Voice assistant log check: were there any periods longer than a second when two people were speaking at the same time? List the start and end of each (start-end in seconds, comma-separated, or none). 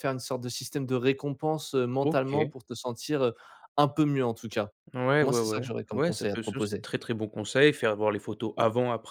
5.2-6.8